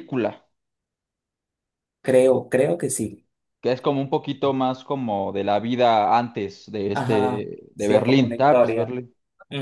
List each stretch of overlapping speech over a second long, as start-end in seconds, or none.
6.9-8.9